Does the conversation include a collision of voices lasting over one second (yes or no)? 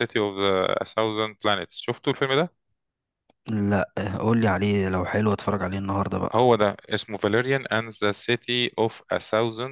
no